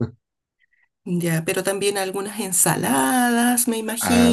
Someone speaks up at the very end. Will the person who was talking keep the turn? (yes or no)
no